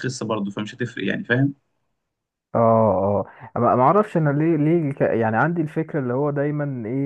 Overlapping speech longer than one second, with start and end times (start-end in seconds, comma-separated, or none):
none